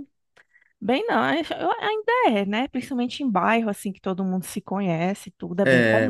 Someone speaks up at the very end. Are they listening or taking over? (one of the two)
taking over